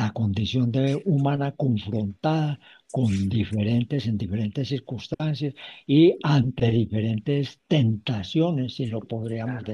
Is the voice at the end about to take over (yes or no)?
no